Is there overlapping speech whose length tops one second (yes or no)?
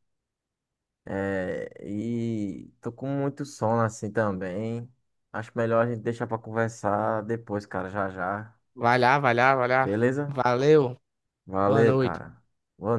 no